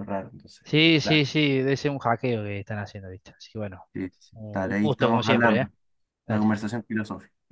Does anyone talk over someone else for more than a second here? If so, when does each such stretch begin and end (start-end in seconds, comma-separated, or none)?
4.3-5.7